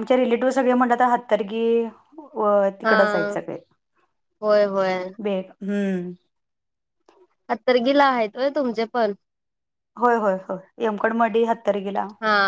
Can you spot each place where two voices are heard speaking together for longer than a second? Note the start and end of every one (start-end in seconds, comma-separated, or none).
none